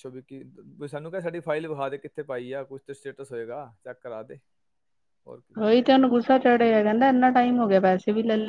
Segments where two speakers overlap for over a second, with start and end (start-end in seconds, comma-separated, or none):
none